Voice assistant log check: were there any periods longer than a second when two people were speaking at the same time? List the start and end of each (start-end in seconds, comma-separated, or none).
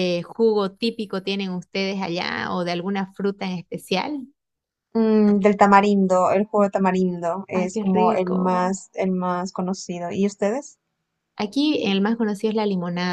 7.5-8.8